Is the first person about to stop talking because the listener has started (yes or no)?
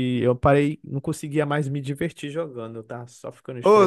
yes